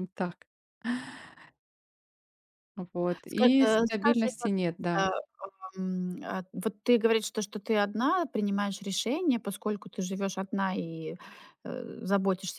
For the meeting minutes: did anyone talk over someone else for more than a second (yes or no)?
yes